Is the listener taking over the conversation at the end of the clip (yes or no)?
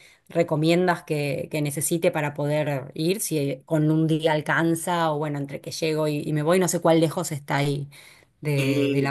yes